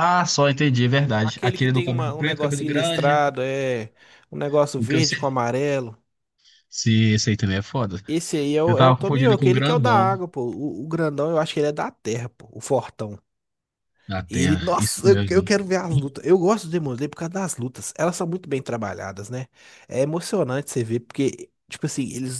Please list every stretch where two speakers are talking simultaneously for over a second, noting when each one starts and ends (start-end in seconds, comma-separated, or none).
1.2-3.2, 8.6-10.2, 14.3-15.5